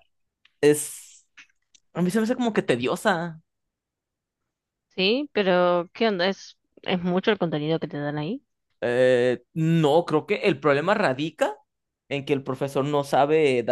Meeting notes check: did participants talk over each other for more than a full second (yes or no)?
no